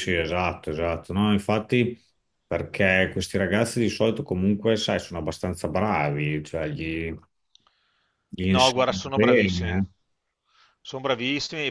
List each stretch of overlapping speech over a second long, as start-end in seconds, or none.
8.5-9.8